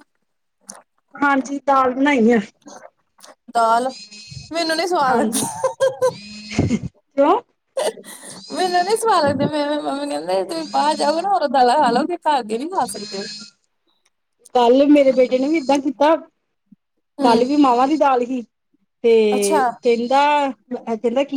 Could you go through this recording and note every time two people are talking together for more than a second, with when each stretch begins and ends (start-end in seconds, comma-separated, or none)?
none